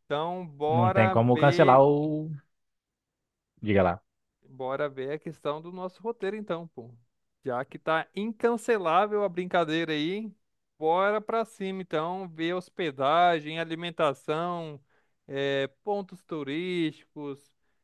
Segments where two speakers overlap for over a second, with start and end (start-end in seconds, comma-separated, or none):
0.7-1.9